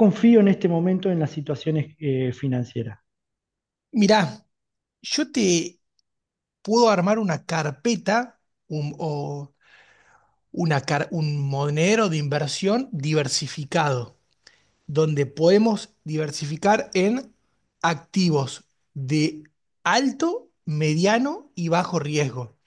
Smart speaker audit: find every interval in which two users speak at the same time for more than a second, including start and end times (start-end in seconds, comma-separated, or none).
none